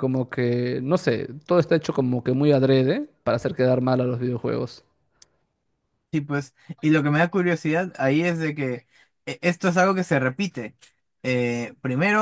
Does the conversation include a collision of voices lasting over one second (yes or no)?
no